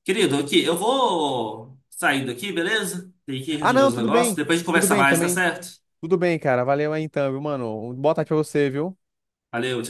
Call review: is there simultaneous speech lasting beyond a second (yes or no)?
yes